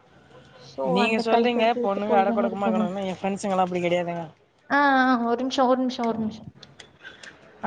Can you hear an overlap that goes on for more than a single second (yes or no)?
yes